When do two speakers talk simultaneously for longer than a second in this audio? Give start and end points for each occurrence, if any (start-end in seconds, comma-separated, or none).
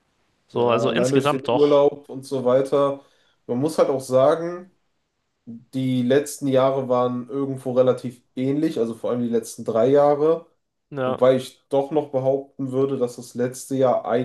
0.5-1.9